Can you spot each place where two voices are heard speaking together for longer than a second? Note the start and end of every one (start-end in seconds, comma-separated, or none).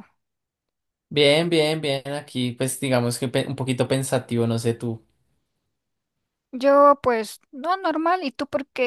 none